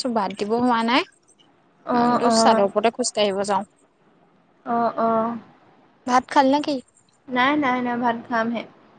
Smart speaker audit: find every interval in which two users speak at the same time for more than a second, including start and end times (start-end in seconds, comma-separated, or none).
none